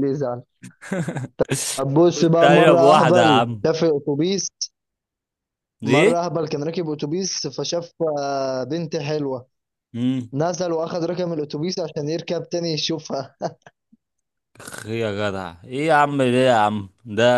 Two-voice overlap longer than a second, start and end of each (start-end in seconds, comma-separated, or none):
2.2-3.6